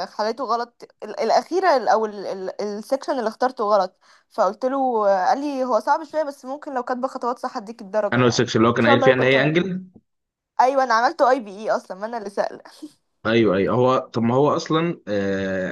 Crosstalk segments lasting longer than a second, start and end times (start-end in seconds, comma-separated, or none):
8.1-9.6